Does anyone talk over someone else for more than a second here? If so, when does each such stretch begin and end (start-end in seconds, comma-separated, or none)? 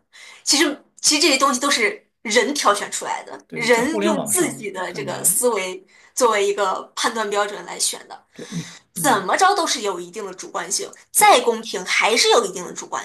3.5-5.4